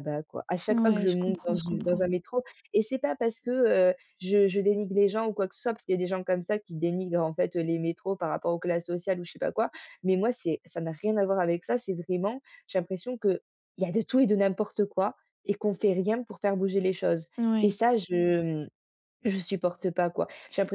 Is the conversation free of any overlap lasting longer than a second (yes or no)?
no